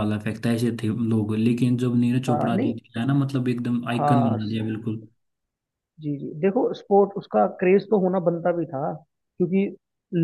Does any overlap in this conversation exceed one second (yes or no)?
no